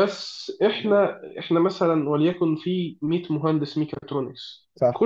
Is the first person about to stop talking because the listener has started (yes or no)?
no